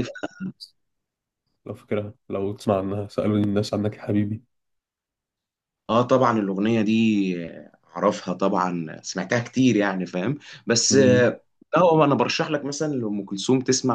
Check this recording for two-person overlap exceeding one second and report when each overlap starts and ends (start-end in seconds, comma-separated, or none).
none